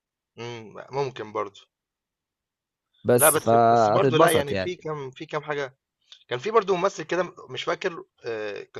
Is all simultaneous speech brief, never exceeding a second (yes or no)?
no